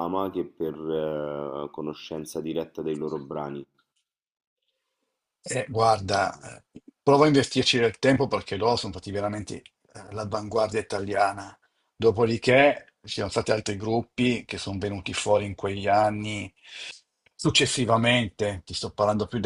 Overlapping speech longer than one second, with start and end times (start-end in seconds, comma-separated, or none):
none